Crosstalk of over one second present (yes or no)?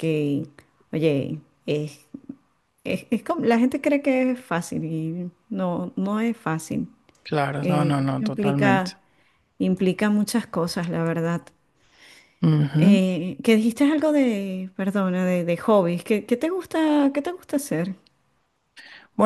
yes